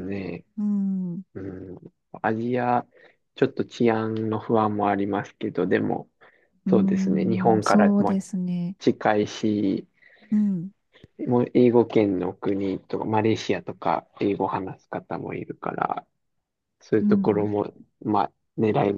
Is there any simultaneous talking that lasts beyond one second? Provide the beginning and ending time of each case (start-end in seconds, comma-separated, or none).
6.7-8.2